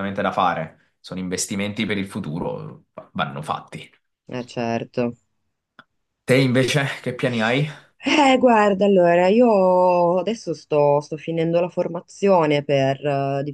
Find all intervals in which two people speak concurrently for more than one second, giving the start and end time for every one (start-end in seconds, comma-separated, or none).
none